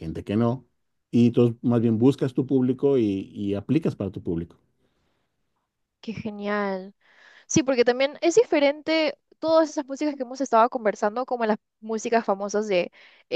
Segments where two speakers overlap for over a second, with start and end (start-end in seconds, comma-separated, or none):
none